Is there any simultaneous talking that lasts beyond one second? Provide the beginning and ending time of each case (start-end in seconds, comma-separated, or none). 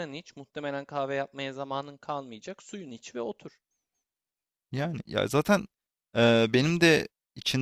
none